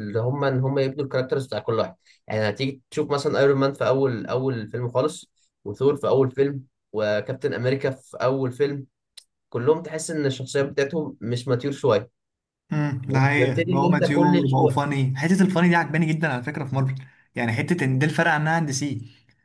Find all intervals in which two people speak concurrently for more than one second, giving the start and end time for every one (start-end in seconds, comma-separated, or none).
13.1-14.8